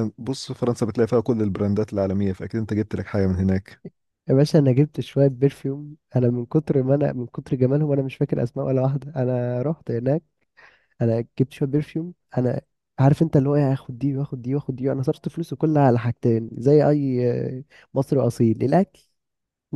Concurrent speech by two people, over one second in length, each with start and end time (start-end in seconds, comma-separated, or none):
none